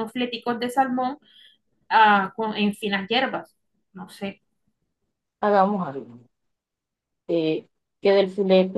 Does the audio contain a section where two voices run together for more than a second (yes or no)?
no